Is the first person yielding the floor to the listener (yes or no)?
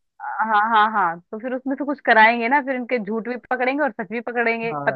yes